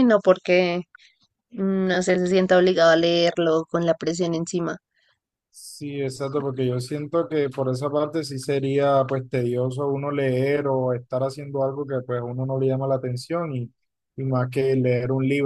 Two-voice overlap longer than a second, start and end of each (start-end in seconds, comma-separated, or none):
none